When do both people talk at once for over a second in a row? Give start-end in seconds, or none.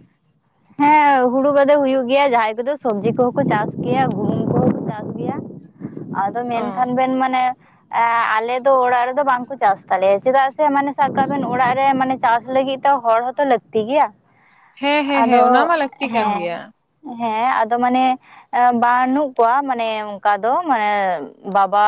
15.0-16.6